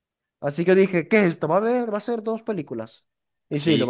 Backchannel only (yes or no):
no